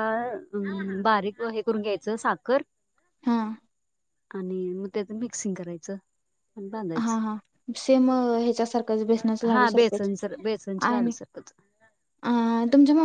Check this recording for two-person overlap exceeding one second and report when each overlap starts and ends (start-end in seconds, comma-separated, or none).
none